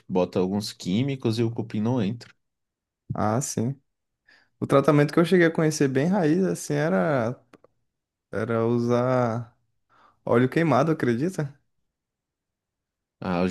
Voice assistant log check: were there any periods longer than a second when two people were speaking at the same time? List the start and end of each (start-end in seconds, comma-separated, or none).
none